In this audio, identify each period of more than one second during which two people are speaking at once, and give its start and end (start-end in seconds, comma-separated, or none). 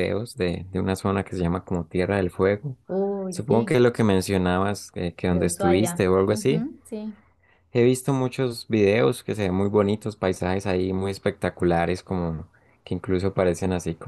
5.3-6.7